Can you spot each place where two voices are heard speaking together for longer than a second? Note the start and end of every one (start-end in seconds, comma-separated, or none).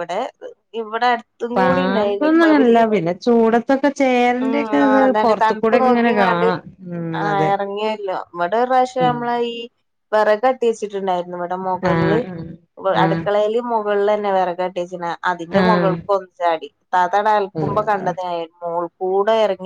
1.6-2.8, 4.5-6.5